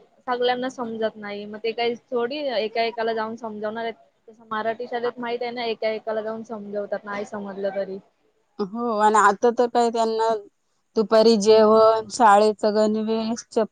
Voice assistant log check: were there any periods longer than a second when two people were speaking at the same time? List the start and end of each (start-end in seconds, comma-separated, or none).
none